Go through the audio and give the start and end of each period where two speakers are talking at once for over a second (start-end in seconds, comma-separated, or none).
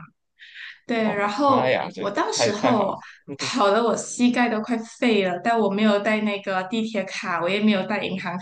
1.0-2.9